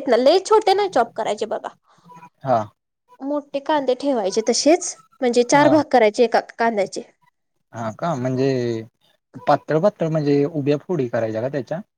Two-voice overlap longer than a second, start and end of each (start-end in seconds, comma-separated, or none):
none